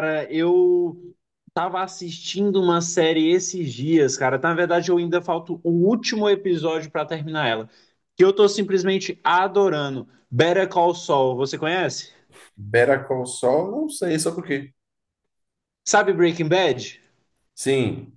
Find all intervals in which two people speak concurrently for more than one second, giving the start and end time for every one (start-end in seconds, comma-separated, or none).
none